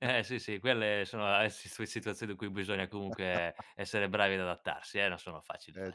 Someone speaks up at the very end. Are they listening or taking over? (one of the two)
taking over